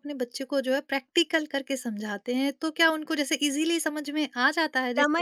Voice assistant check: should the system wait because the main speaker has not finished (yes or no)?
no